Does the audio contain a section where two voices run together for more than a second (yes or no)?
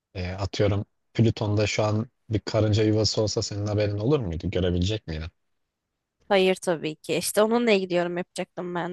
no